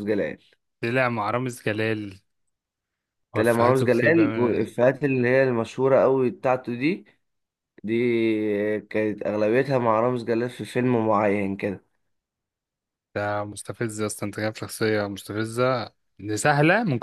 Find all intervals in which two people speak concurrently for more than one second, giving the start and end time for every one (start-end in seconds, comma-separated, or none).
3.3-4.7